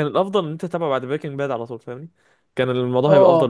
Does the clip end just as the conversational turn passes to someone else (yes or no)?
yes